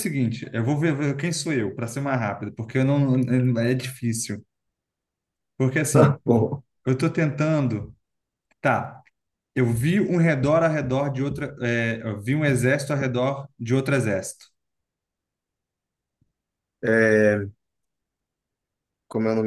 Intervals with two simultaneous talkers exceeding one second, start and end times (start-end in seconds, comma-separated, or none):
none